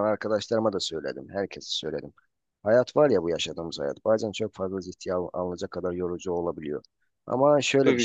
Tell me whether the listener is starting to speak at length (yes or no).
no